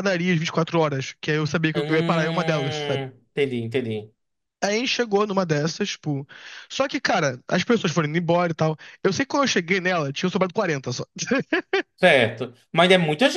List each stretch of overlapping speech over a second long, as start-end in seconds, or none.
1.7-3.0